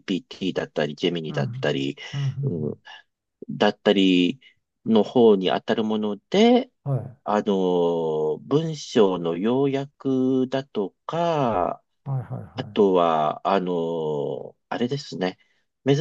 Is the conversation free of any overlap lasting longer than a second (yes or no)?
yes